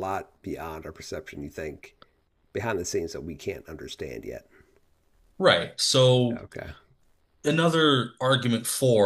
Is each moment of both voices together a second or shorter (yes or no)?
yes